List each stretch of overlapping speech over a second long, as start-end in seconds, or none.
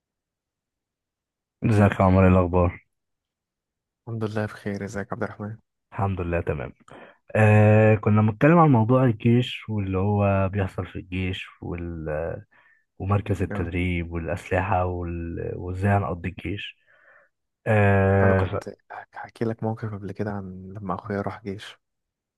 none